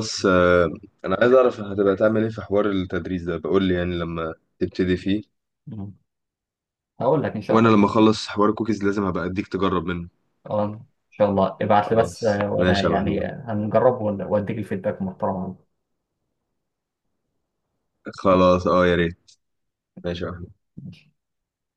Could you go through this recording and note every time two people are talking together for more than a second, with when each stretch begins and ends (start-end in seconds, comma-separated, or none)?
11.9-13.3